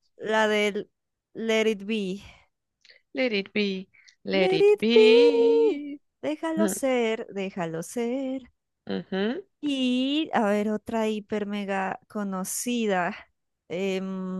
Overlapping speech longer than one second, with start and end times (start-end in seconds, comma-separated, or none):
4.3-5.8